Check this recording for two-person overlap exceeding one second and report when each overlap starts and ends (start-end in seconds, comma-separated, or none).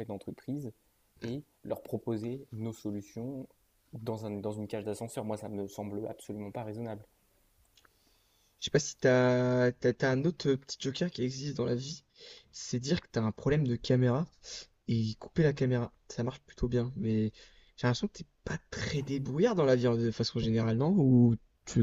none